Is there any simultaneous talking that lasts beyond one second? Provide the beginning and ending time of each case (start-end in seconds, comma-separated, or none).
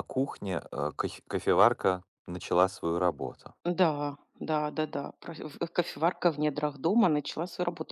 none